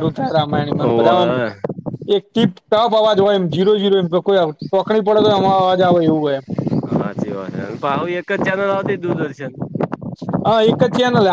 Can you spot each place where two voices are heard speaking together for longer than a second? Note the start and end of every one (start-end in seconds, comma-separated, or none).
none